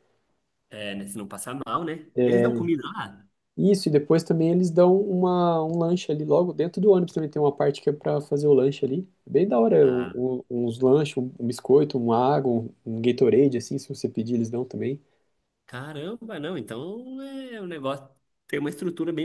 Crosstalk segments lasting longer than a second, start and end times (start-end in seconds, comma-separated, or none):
none